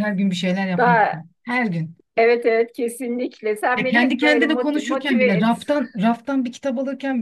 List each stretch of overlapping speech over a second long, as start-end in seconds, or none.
3.8-5.5